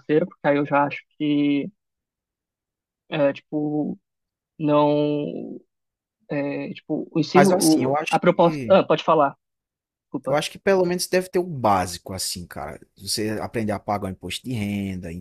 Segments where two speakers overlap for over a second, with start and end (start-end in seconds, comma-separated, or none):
7.3-8.8